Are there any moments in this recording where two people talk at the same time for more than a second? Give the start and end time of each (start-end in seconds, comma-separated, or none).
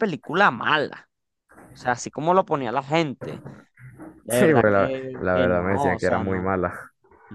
4.3-6.5